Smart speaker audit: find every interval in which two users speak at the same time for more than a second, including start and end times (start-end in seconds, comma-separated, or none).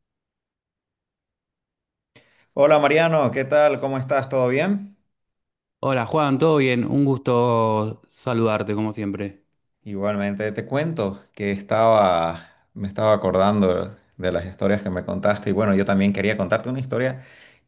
none